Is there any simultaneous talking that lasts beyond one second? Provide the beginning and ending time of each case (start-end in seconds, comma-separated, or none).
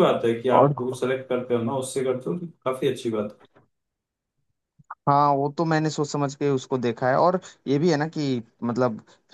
none